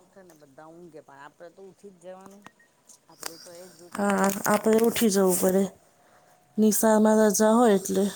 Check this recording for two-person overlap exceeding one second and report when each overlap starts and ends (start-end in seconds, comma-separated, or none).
none